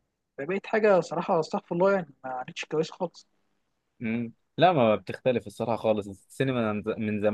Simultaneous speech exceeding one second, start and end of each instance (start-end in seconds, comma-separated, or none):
none